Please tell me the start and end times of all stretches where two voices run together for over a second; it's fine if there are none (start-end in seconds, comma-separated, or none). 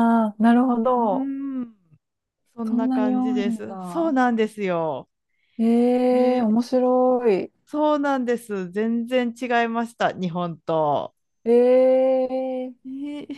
2.7-4.1